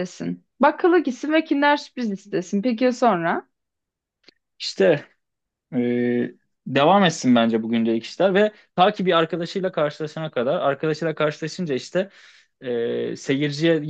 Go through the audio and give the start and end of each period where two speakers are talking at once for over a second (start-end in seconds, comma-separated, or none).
none